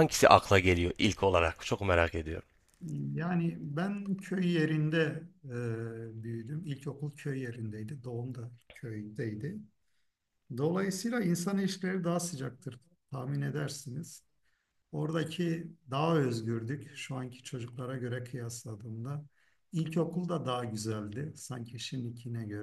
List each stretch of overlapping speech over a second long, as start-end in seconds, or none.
none